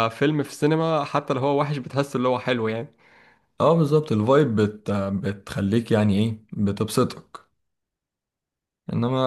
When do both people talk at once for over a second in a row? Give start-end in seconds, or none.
none